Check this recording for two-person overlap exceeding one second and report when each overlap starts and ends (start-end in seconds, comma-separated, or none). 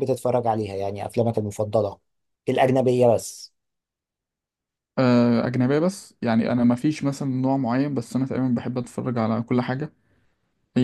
none